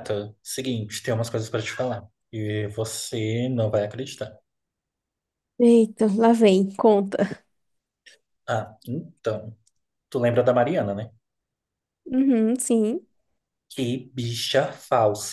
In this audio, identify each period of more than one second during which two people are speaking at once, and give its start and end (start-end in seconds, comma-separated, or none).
none